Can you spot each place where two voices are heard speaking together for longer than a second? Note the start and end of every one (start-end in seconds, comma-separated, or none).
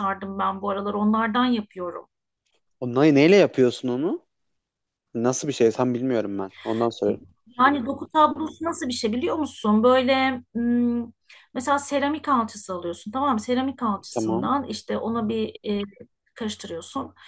none